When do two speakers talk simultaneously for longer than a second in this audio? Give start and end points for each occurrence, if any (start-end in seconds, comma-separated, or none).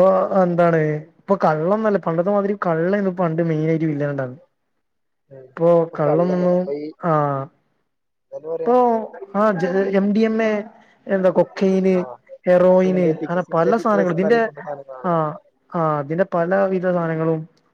12.8-14.4